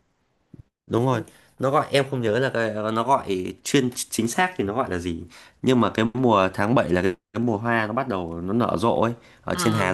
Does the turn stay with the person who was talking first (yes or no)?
yes